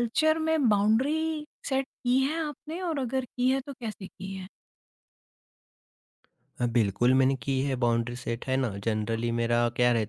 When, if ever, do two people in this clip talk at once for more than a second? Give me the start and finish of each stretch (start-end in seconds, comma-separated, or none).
none